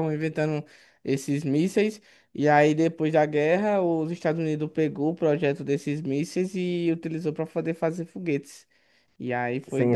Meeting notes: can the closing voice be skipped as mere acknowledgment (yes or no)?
no